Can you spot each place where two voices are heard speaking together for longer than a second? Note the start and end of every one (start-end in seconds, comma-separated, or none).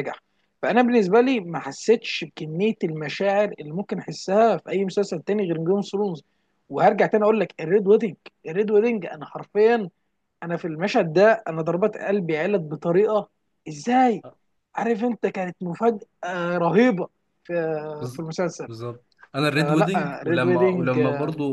19.5-21.0